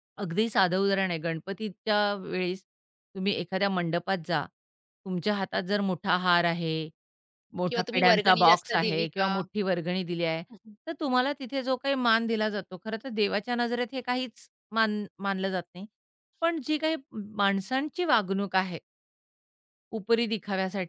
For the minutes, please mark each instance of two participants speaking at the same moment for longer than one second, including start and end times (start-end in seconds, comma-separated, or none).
7.7-9.3